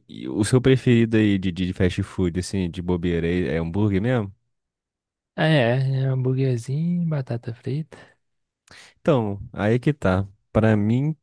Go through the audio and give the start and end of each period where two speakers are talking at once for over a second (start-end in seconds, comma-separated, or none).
none